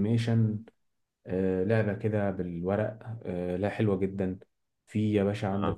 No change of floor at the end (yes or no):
yes